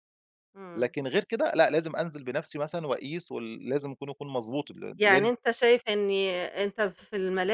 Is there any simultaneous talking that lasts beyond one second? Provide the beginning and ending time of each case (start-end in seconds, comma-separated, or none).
none